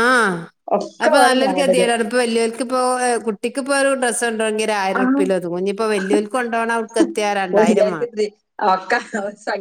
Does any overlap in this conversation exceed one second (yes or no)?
no